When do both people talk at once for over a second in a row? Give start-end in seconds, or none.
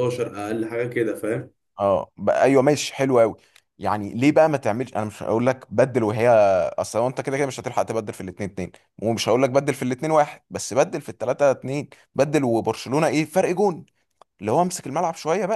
none